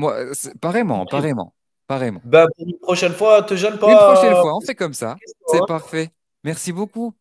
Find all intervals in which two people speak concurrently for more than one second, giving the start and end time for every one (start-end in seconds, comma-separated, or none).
3.9-5.9